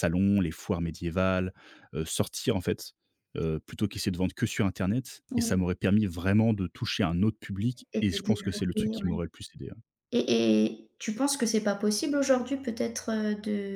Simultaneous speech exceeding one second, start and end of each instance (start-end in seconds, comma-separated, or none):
7.9-9.2